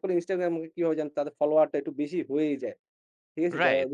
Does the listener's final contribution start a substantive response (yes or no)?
yes